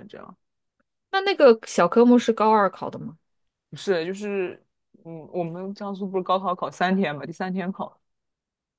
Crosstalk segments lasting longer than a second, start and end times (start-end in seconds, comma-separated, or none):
none